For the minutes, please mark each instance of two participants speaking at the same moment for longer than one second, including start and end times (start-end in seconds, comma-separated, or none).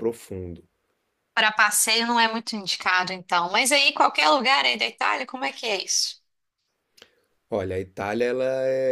none